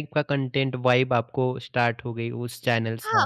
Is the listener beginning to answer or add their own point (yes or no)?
yes